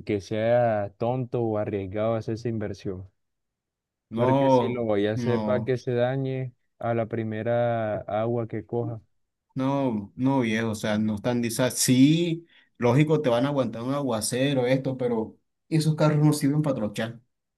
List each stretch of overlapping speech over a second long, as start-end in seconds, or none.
4.2-5.7